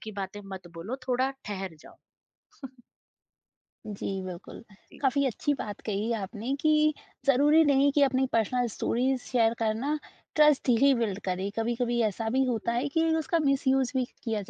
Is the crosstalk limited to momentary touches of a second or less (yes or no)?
yes